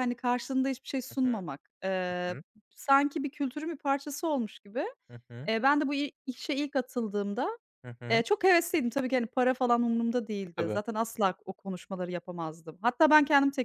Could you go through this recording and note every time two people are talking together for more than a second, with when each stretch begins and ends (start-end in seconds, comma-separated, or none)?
none